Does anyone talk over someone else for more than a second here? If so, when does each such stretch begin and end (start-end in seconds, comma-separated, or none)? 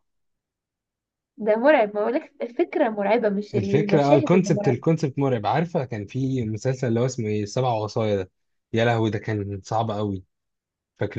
3.5-4.8